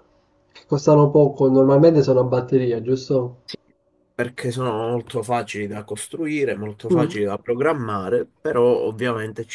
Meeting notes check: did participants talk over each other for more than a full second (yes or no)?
no